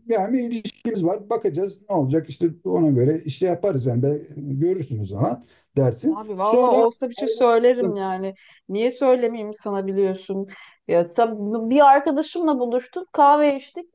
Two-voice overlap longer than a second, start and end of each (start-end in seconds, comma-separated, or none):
6.1-8.0